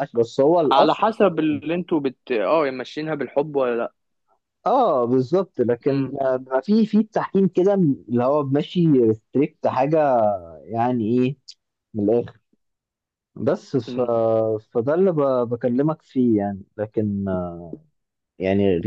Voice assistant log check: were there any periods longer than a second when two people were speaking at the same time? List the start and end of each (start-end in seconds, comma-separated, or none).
none